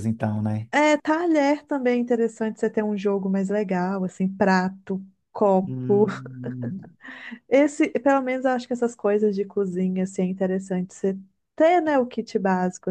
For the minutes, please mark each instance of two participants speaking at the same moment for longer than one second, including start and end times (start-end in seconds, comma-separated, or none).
none